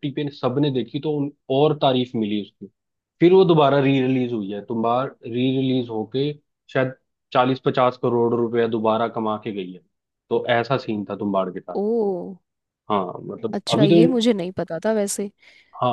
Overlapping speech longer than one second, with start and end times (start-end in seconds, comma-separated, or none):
none